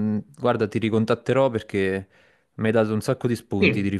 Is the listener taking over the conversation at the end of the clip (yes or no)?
yes